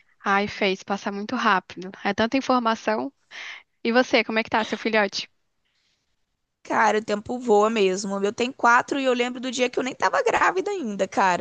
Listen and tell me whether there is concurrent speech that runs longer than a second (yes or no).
no